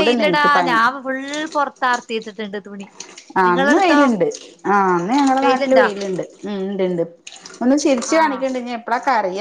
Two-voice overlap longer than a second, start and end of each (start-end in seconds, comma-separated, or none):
none